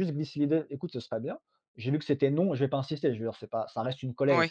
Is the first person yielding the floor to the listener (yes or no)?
no